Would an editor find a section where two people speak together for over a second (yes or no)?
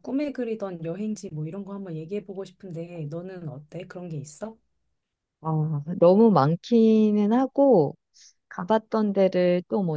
no